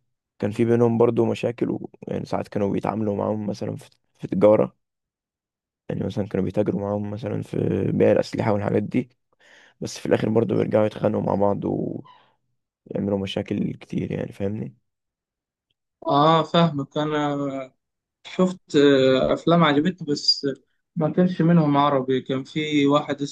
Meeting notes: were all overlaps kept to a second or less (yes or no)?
yes